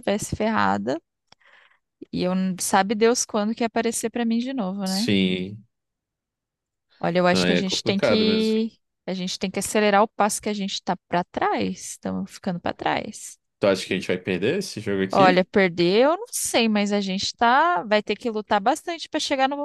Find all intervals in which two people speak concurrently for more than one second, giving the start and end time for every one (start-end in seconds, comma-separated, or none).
7.3-8.6